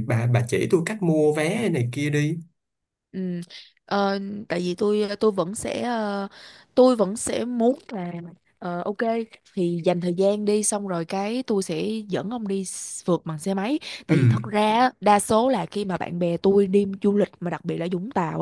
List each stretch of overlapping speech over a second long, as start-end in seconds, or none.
none